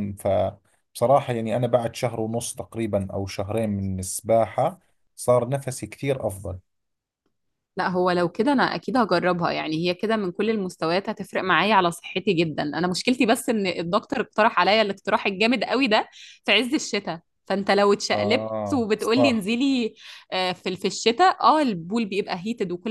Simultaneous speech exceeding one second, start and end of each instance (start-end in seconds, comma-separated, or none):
18.1-19.4